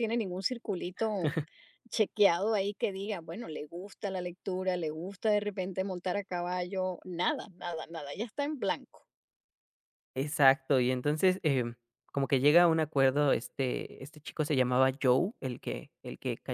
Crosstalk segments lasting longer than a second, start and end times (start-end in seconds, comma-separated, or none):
none